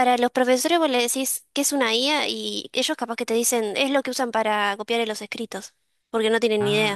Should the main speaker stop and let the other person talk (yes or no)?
yes